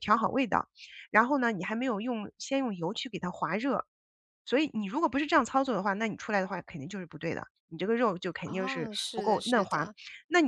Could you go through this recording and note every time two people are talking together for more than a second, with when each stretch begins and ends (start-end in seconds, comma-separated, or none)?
8.4-9.9